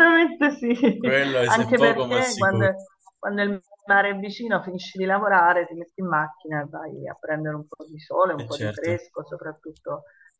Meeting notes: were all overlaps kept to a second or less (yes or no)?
no